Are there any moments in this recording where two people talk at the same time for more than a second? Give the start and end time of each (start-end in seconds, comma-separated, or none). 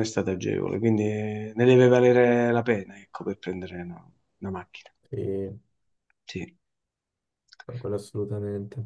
none